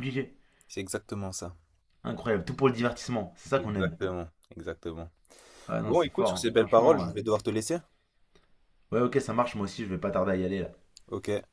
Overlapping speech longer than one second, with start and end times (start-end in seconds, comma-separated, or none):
5.8-7.1